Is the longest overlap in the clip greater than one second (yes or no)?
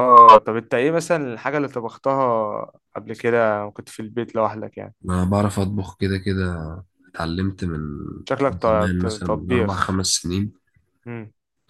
yes